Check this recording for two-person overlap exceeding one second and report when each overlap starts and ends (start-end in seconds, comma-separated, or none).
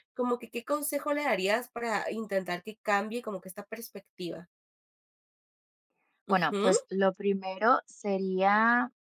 none